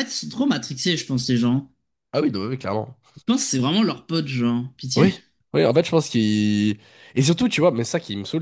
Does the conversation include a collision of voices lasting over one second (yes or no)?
no